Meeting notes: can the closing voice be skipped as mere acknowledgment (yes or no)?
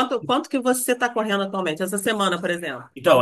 no